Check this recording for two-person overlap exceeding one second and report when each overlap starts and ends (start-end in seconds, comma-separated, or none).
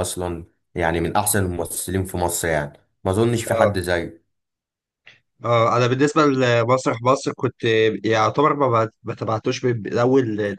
none